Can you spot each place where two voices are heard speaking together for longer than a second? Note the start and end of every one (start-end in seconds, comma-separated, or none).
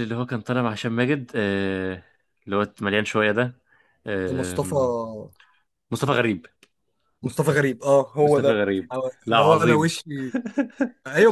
8.2-9.9